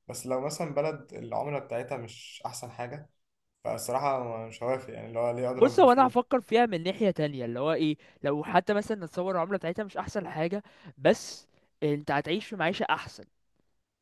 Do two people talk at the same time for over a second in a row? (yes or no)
no